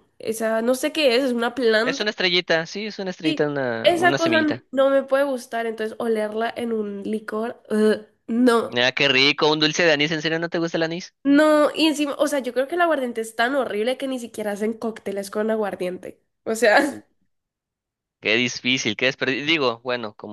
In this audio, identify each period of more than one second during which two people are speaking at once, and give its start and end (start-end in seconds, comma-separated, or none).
3.2-4.6